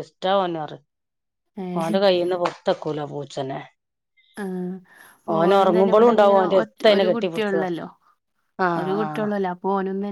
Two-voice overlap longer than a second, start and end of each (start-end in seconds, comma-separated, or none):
5.4-7.1